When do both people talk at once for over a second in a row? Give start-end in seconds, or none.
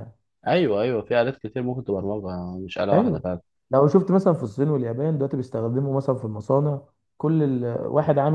none